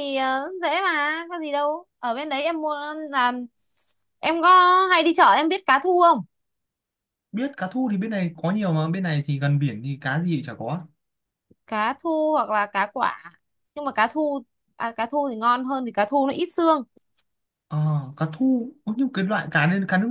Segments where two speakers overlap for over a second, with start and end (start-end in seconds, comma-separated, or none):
none